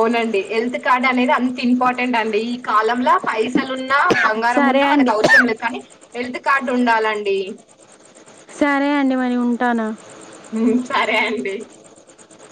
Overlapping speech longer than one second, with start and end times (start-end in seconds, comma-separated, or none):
none